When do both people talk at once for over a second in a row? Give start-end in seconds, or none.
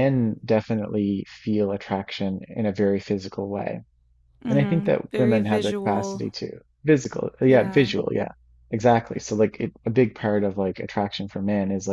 4.5-6.2